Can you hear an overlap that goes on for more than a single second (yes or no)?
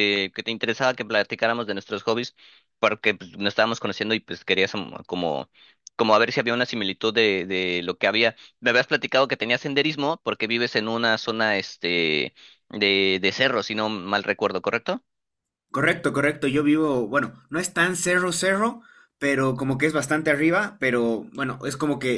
no